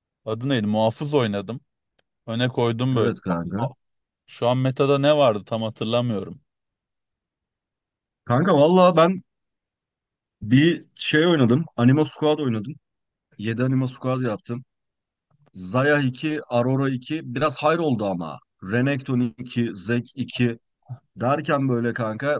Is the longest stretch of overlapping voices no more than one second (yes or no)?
yes